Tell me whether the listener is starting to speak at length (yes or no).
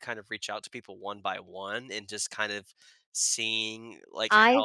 yes